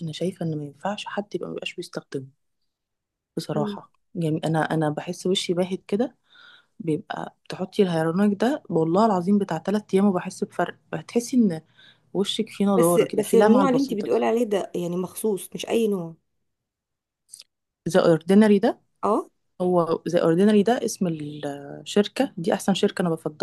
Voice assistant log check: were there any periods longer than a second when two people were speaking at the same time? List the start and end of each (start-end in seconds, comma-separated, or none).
12.7-14.2